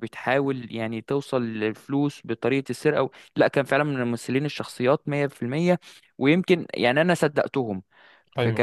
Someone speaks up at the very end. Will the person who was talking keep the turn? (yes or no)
yes